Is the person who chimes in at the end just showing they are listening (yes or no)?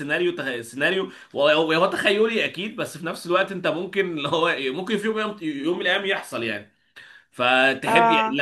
yes